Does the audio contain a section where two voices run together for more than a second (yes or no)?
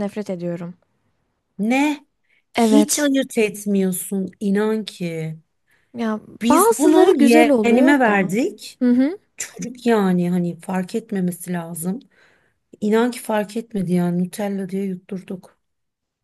yes